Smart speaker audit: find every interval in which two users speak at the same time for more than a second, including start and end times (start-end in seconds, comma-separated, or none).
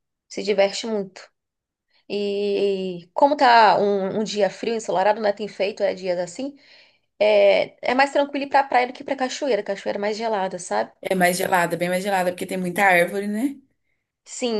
none